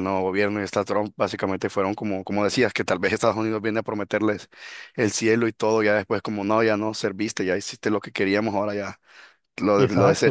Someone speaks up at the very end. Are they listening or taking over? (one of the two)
taking over